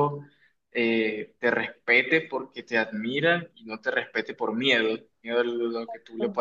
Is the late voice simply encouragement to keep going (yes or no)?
yes